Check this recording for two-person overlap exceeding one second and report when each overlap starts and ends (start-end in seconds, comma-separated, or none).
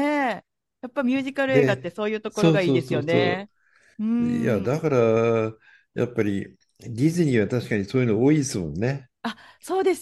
1.5-3.2